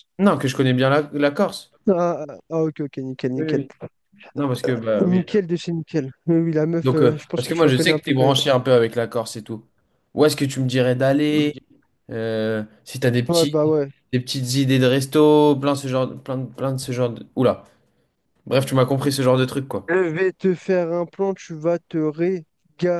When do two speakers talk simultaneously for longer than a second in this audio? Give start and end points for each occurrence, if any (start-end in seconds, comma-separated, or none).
6.8-8.4